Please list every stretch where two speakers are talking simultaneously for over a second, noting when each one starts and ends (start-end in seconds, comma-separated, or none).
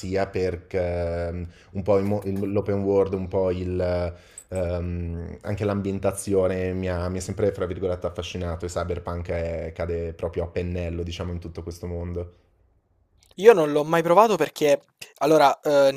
none